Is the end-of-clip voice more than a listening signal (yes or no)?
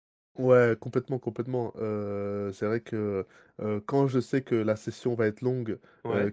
no